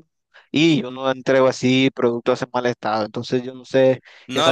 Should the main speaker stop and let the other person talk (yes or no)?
yes